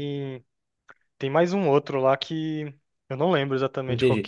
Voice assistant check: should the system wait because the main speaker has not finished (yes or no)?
no